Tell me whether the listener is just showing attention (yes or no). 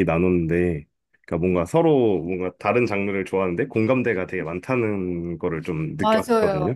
no